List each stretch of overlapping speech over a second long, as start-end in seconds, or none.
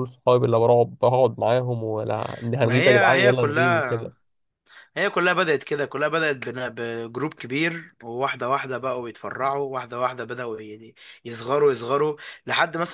2.6-4.1